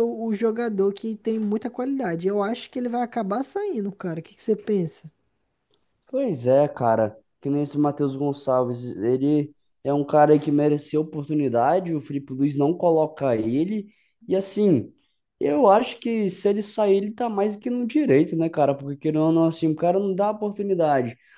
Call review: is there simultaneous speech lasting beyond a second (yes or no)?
no